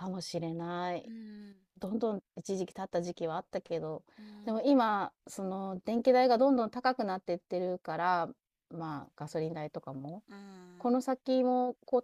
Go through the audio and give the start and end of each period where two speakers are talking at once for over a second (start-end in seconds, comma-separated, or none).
none